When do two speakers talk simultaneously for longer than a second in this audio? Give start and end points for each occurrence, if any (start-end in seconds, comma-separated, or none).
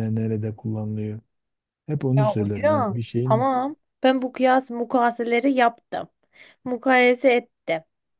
2.2-3.5